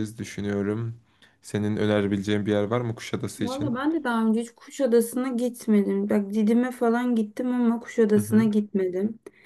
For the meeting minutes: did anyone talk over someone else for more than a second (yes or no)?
no